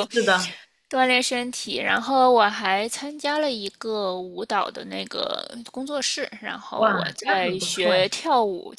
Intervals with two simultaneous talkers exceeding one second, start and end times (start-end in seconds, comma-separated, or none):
6.8-8.1